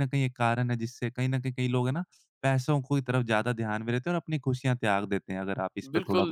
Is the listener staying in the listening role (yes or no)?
no